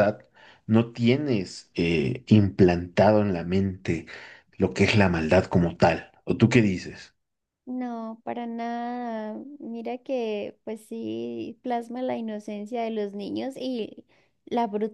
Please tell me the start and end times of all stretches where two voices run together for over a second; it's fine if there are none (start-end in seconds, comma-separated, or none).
none